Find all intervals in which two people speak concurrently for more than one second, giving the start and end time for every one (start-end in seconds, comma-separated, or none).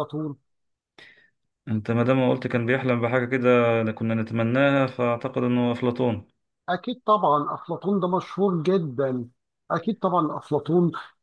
none